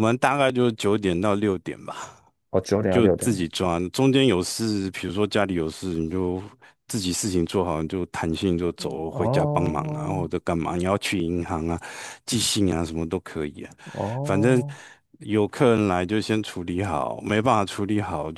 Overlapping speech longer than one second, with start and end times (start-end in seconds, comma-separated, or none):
8.8-10.3